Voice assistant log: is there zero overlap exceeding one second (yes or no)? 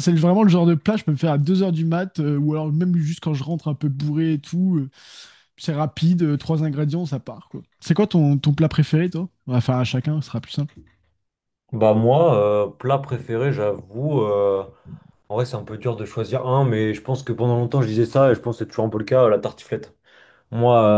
yes